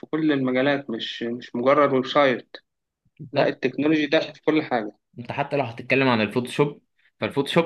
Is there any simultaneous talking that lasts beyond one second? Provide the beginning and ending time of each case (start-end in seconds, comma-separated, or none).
none